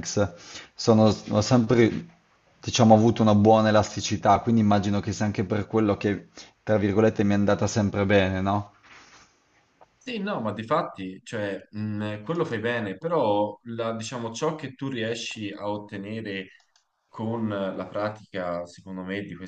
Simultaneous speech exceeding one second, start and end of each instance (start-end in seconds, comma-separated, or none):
none